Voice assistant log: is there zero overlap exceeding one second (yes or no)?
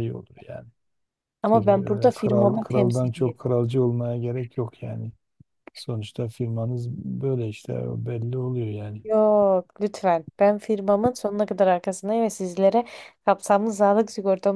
no